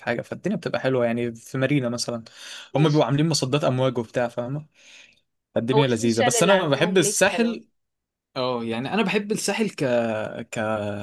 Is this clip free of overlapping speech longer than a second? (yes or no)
no